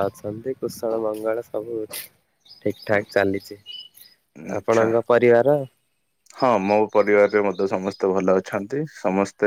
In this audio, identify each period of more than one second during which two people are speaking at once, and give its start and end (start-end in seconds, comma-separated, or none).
none